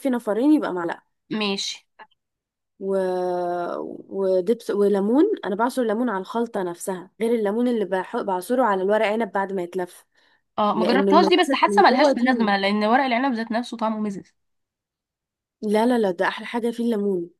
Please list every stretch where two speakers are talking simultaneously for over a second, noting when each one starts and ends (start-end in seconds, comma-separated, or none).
10.7-12.2